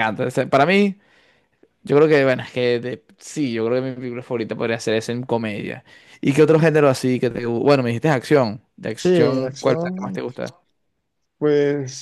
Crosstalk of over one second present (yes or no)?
yes